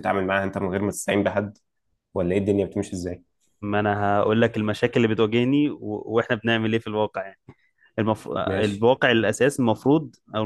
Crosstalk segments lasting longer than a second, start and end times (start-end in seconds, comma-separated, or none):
none